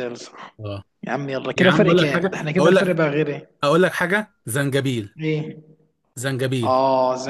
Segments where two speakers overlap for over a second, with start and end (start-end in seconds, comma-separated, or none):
1.6-3.0